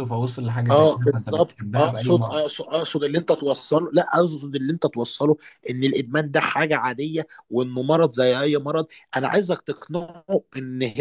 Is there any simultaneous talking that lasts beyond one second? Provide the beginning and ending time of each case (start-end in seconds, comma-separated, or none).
0.7-2.4